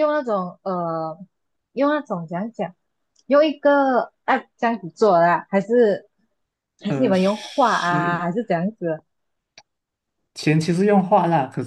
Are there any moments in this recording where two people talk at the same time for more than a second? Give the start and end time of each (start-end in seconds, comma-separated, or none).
6.8-8.3